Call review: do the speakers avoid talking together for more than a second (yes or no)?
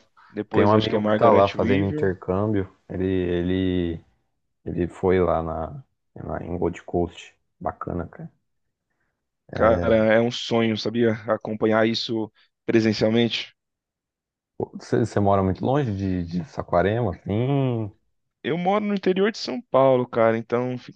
no